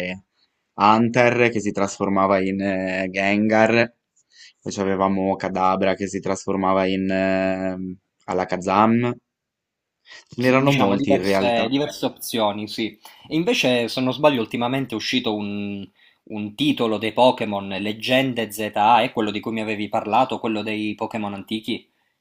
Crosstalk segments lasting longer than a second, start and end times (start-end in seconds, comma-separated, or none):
10.4-11.7